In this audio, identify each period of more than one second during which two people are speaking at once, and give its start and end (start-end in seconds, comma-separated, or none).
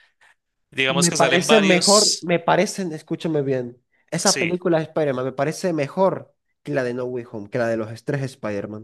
0.9-2.3